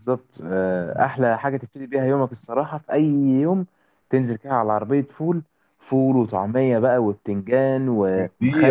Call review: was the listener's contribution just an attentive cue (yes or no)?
no